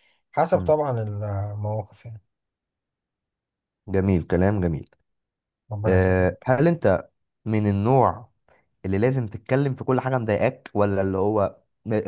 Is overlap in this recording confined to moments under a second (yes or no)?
yes